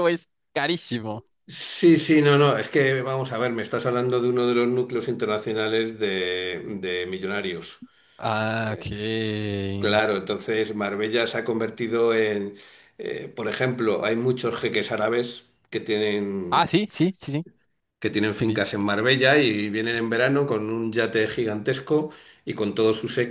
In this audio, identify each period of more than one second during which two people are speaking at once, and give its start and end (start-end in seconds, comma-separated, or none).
none